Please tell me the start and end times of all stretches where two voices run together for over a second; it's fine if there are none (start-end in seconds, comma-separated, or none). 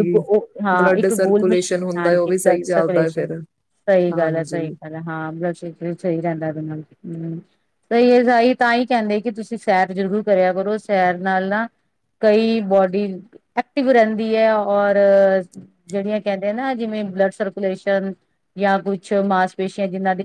0.8-3.3